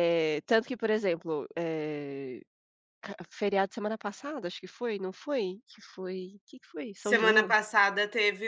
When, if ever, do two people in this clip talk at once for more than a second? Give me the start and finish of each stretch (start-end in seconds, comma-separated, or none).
none